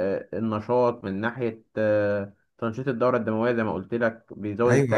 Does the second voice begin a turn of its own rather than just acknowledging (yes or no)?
yes